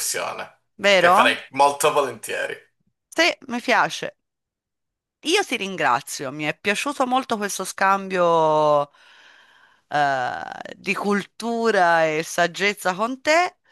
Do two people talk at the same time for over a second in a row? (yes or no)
no